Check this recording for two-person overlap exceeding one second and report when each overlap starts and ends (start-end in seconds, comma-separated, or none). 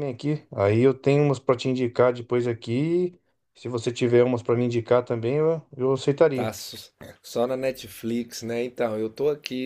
none